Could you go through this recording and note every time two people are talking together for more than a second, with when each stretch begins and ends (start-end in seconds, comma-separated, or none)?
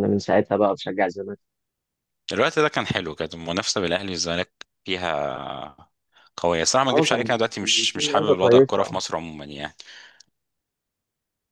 6.9-9.0